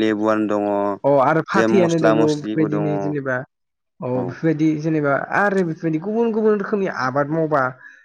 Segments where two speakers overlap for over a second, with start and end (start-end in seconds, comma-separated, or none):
1.5-3.3